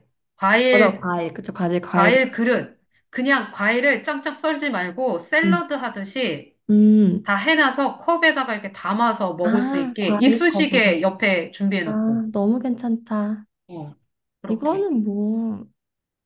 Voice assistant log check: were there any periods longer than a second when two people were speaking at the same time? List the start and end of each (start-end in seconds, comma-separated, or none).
9.4-10.9